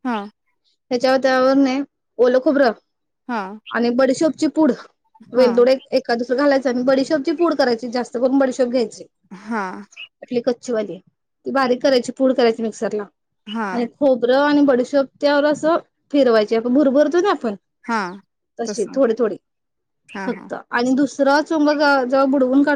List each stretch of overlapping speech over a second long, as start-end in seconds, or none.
none